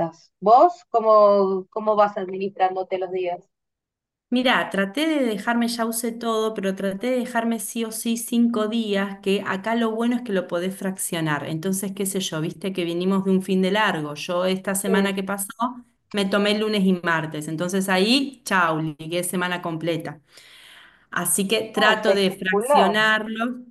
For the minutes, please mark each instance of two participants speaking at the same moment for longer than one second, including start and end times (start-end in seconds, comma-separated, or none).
21.8-22.9